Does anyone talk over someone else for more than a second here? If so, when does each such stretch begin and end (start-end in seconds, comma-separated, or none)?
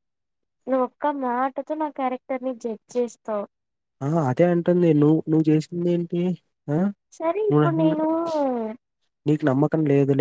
none